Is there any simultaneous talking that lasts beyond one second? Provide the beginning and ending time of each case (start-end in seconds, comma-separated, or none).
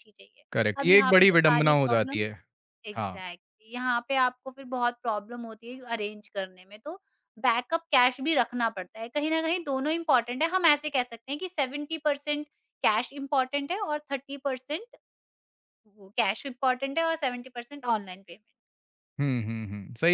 0.8-2.2